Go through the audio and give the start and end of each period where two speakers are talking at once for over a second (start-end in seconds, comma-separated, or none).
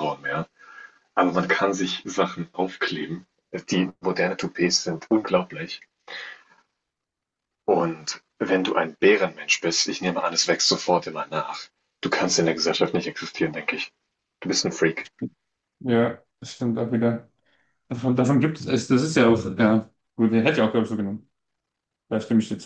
none